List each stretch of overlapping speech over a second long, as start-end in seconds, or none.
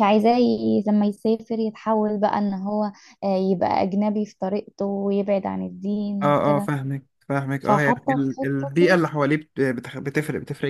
7.6-9.0